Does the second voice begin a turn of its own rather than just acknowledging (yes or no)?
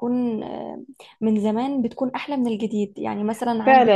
yes